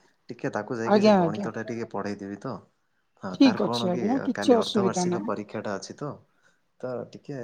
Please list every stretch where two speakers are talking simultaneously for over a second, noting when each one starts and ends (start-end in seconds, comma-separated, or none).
3.3-5.3